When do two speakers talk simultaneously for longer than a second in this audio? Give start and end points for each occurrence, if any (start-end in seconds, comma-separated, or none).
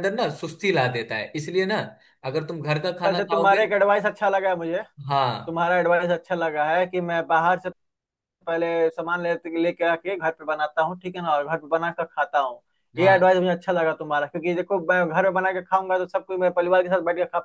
none